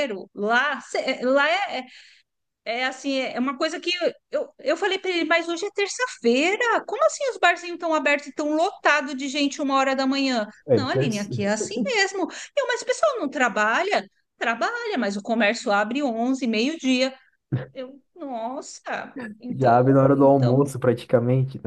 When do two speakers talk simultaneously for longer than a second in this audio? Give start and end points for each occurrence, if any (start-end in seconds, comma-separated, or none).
19.5-20.7